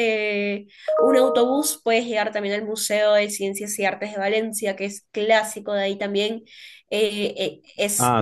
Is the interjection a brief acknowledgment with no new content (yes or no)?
no